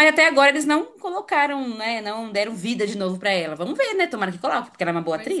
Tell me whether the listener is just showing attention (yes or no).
no